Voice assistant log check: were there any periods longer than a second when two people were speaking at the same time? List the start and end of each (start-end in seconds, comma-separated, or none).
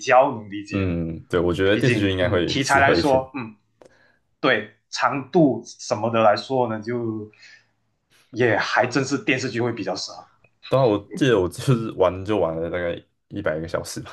1.7-3.3